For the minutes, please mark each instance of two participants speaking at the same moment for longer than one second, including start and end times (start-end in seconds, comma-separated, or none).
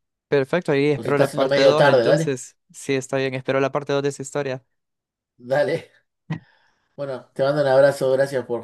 0.9-2.4